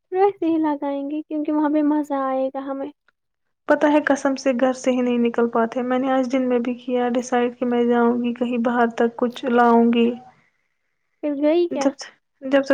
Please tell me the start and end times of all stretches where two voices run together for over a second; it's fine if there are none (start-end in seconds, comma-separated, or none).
none